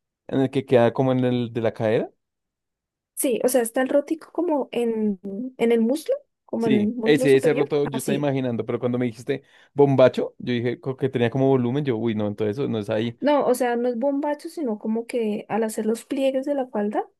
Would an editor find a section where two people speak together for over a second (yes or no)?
yes